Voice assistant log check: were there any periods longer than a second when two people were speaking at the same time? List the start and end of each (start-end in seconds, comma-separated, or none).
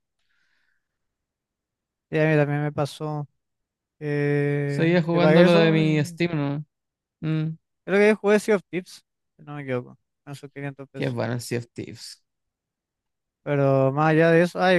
4.7-6.2